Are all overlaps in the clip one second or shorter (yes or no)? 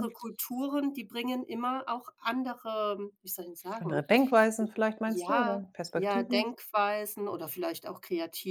no